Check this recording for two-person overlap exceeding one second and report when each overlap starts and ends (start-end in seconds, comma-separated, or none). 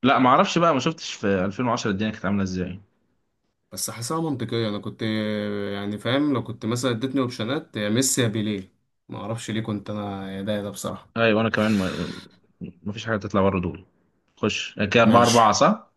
none